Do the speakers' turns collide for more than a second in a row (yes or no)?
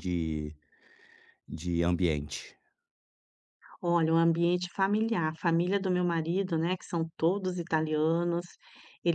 no